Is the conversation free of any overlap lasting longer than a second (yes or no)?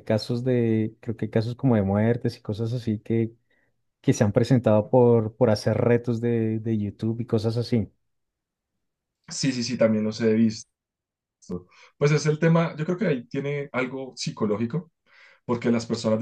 yes